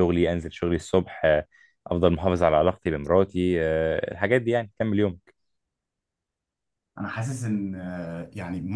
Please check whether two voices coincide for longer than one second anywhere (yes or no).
no